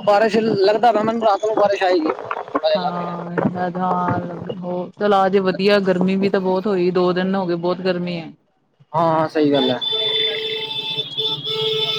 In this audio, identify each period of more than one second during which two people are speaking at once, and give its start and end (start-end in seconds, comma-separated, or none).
none